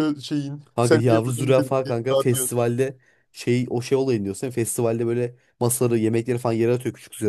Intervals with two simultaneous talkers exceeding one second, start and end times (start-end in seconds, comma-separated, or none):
0.8-2.5